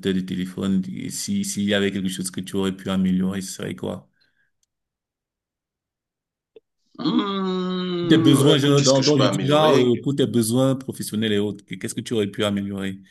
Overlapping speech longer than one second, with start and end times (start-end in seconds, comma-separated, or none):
8.1-10.1